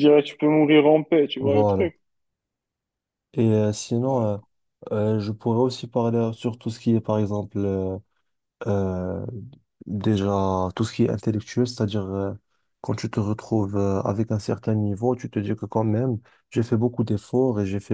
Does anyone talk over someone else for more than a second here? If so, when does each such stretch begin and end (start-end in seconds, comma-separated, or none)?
none